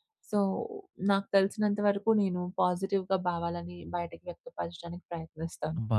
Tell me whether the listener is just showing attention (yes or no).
no